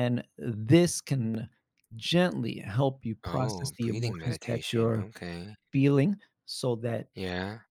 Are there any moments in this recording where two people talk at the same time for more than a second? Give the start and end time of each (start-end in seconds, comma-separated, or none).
3.2-5.0